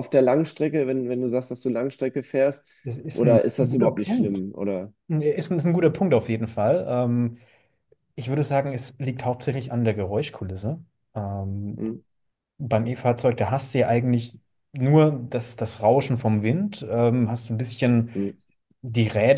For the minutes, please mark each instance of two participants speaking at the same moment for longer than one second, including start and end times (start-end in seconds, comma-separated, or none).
3.1-4.4